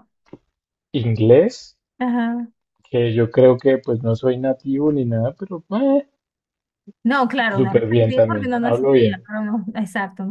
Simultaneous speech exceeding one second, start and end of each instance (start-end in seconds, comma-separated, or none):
7.5-9.3